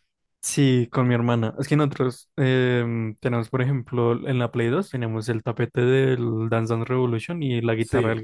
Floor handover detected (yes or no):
yes